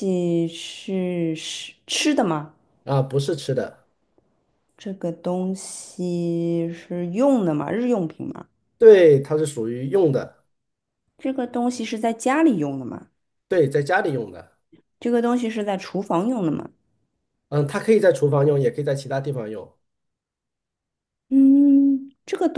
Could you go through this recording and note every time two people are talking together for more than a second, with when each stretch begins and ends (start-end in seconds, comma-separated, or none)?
none